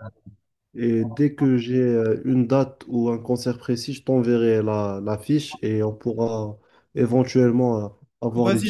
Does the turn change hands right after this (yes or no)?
yes